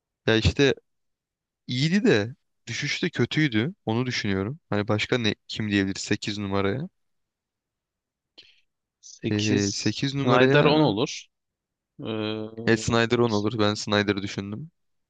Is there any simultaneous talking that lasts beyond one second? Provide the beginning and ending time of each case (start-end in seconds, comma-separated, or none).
9.3-10.7